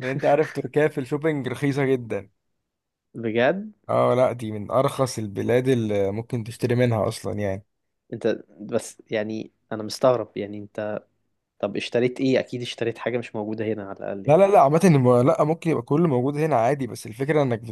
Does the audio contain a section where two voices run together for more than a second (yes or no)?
no